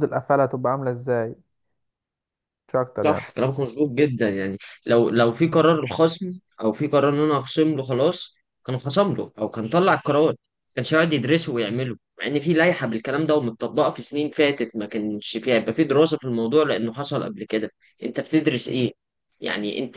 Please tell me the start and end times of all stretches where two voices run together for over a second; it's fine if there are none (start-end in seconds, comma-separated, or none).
none